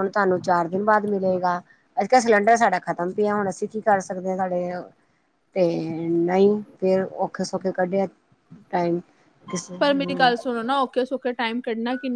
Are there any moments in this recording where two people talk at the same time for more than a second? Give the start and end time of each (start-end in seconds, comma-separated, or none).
none